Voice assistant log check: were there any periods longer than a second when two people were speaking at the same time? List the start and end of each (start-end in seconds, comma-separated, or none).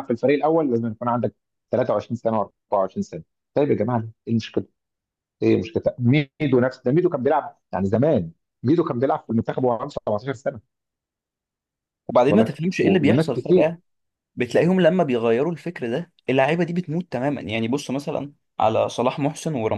12.1-13.7